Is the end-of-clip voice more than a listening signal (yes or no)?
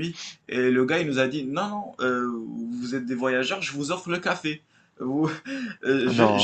no